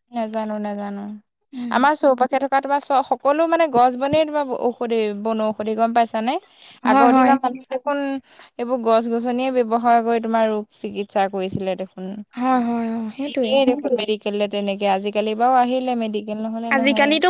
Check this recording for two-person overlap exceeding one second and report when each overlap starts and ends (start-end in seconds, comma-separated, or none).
none